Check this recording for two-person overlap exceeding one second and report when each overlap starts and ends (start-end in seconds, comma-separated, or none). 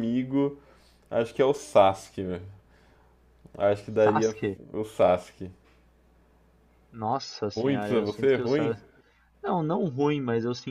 7.6-8.8